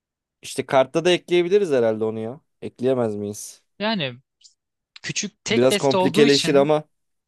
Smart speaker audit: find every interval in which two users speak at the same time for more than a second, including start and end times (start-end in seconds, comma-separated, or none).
5.5-6.7